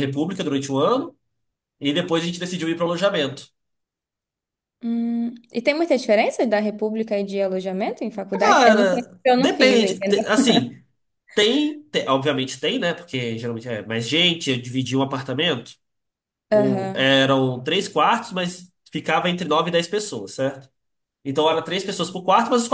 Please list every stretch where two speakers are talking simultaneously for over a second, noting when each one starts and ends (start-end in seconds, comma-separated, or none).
8.3-10.2